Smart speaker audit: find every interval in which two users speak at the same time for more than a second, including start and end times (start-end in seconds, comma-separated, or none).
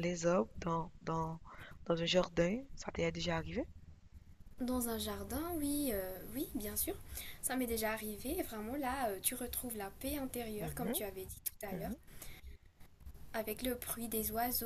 none